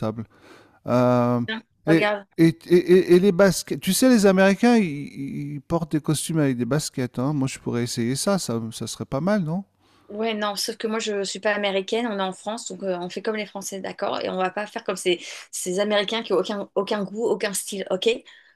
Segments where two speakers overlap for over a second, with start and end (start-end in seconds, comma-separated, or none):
none